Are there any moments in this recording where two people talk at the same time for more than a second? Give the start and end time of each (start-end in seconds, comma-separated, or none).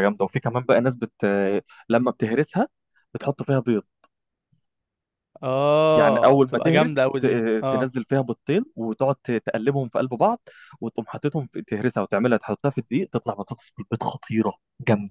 6.0-7.9